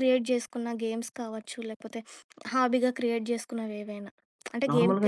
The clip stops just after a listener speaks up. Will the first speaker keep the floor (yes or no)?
no